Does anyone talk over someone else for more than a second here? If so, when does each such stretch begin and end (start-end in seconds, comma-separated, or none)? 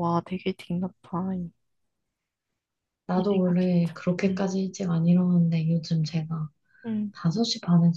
3.1-4.5